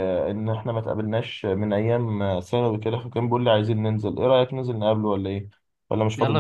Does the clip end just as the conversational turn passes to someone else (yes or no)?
yes